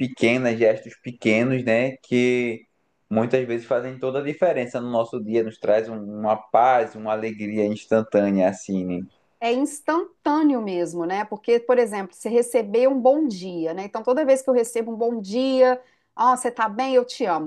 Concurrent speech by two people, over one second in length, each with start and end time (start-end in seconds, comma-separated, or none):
none